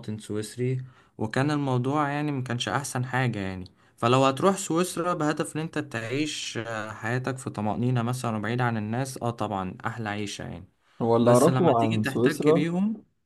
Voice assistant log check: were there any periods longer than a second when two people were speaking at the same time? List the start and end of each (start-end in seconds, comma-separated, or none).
11.2-12.7